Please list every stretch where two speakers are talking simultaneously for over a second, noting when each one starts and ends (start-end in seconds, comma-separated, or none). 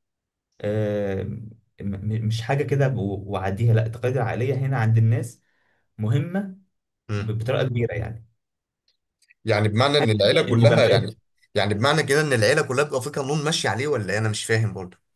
9.9-11.1